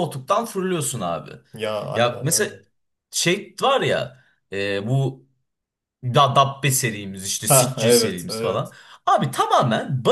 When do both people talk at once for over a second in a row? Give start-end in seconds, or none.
7.4-8.7